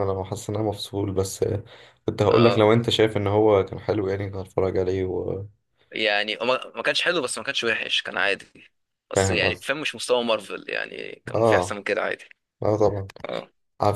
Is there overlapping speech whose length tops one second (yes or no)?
no